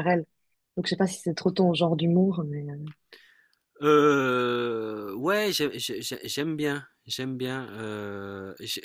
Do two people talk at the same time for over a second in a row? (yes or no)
no